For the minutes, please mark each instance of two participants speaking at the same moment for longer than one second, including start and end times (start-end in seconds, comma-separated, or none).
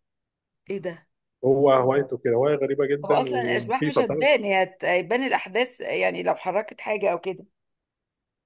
3.0-4.3